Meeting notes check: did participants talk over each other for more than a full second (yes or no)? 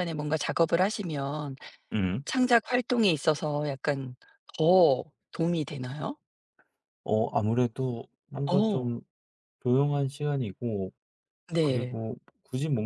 no